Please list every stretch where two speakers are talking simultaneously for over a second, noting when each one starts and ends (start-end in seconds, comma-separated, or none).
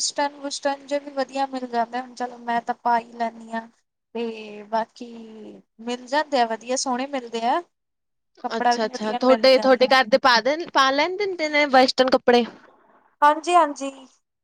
8.6-9.9